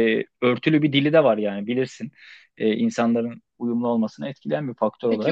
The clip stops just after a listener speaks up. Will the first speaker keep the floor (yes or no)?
no